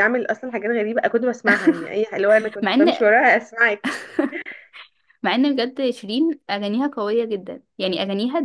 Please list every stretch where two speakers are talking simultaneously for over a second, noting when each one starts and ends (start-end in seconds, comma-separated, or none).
none